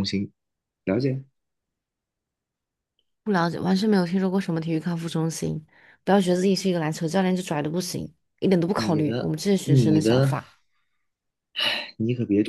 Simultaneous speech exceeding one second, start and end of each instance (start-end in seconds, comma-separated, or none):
8.7-10.3